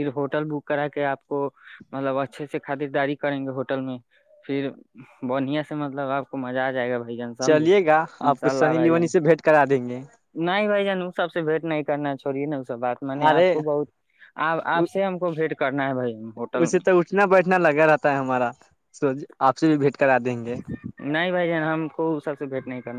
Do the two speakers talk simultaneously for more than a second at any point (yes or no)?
yes